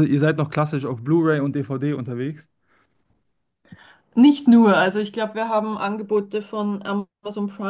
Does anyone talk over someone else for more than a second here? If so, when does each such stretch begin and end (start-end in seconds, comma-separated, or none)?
none